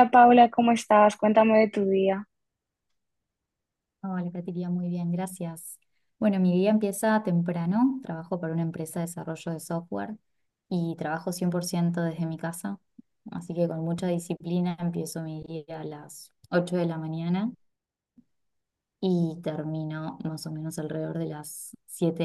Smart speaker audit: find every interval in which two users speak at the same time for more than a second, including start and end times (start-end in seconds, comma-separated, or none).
none